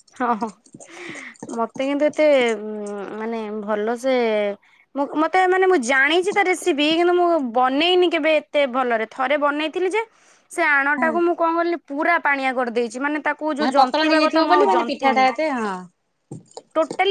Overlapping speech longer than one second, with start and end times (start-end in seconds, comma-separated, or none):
13.6-15.3